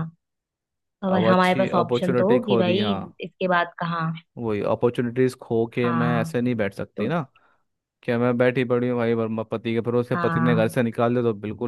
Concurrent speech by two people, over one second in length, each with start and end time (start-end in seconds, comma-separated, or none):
1.1-3.0